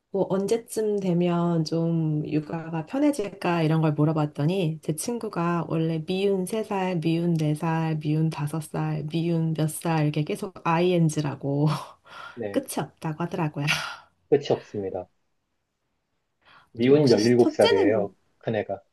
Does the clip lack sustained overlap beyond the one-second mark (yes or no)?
no